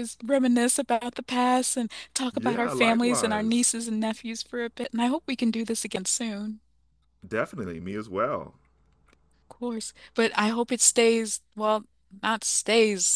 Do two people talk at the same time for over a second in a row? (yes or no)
yes